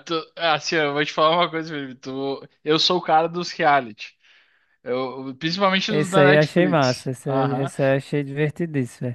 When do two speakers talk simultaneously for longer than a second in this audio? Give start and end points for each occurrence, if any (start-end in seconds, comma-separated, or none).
5.9-7.7